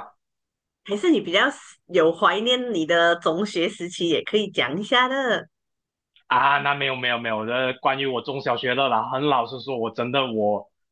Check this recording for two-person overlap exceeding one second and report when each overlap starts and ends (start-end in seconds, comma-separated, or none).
none